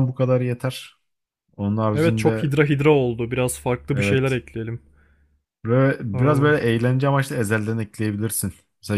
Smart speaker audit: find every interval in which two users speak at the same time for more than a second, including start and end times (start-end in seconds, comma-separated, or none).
none